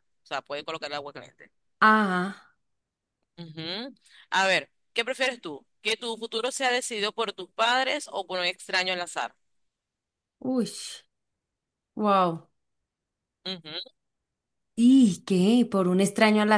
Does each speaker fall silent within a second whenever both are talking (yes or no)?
yes